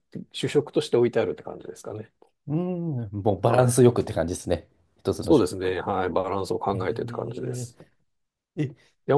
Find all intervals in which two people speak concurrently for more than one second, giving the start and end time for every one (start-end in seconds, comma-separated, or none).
none